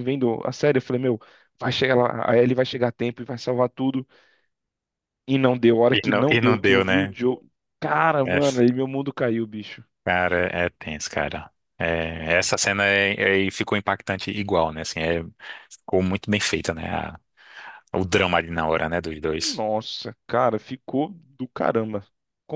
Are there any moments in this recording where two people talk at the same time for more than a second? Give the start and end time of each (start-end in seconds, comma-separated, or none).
5.9-7.2